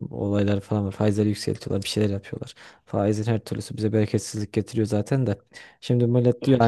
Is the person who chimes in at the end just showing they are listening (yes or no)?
yes